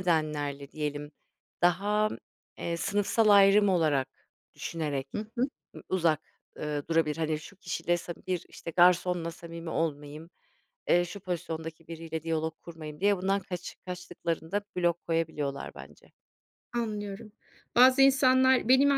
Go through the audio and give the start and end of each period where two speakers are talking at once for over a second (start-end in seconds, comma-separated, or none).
none